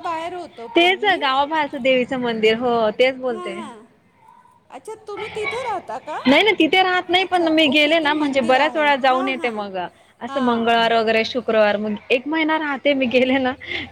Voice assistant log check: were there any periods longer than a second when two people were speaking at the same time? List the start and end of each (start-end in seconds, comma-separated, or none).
7.2-9.5